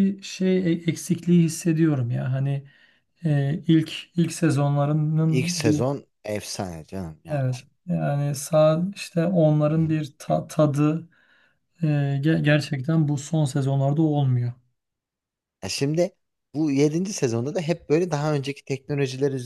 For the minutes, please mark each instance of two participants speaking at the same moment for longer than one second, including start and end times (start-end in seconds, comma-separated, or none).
none